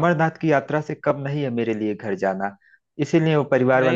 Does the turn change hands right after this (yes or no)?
no